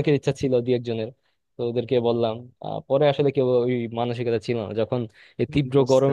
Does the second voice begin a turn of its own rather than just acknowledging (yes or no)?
no